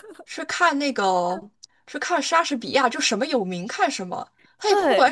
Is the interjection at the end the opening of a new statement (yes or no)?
no